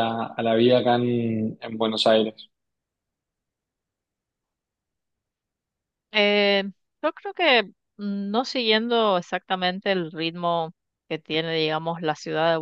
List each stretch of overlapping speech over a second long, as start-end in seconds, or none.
none